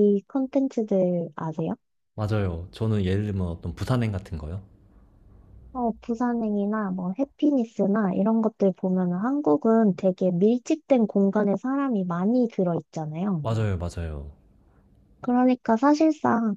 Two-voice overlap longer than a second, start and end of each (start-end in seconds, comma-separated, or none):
none